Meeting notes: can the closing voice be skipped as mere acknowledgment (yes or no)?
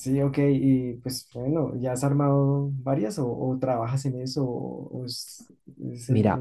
no